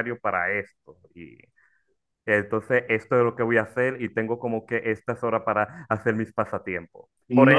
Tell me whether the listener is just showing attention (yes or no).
yes